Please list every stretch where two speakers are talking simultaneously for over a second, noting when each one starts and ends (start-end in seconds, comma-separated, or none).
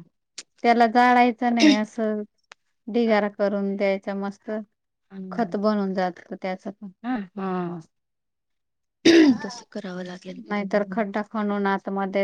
none